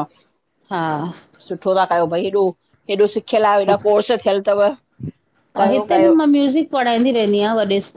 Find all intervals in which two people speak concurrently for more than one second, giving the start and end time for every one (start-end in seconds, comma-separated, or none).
none